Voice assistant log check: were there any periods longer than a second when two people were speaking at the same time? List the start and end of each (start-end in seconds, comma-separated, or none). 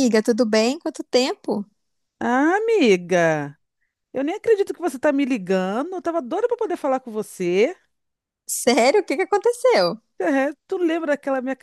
none